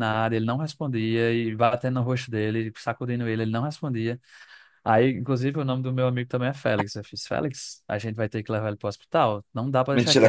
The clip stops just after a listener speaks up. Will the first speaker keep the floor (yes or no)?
no